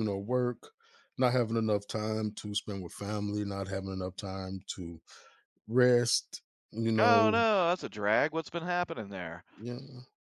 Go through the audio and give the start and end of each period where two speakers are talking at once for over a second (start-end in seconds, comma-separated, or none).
none